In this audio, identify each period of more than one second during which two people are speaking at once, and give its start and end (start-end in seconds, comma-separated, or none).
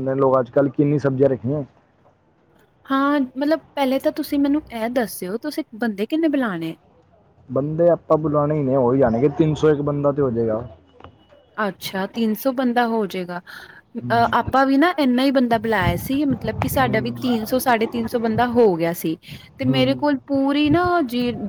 none